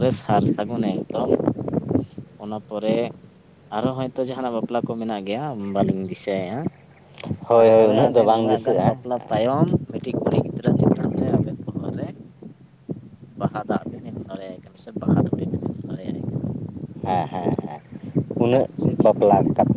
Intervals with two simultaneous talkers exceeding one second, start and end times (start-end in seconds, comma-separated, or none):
7.5-9.0